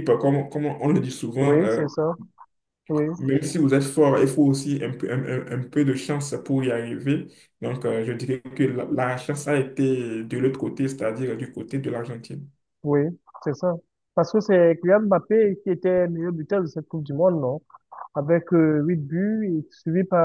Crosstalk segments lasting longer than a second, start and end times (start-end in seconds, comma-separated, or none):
none